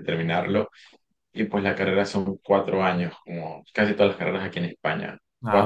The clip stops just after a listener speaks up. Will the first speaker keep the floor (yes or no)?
yes